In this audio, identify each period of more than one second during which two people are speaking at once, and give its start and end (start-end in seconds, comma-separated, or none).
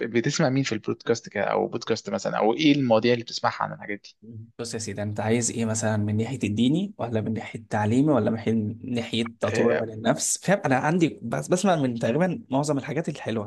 none